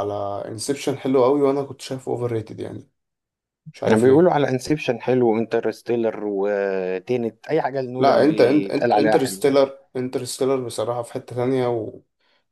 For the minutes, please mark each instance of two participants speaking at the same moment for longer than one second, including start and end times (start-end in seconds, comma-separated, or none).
8.0-9.5